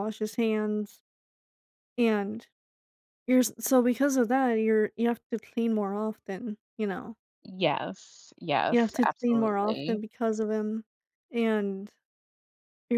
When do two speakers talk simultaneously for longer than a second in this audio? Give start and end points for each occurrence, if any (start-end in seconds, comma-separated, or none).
8.7-10.0